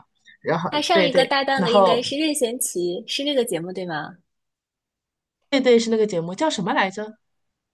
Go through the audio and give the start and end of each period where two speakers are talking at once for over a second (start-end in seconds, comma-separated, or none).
0.7-2.1